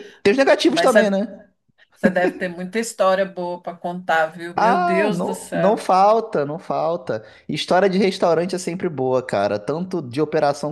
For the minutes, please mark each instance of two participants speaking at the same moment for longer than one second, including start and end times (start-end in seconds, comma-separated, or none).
4.5-5.8